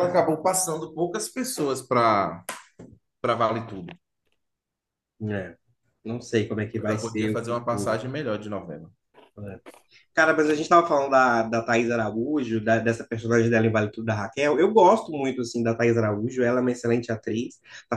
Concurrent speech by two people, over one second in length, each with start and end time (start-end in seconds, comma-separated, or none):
6.8-8.0